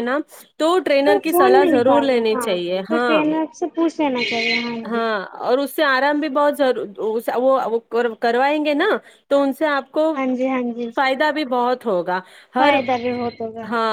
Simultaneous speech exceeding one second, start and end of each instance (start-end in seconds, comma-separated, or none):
1.3-3.2